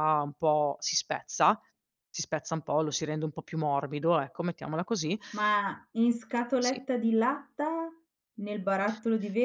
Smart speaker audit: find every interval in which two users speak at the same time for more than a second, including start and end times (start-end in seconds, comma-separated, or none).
none